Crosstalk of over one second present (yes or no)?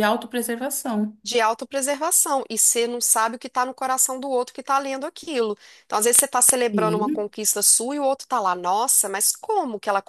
no